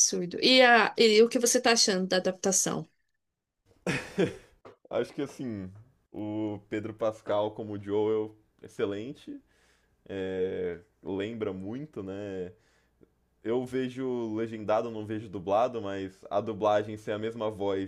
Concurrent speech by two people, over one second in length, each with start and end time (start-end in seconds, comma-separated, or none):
none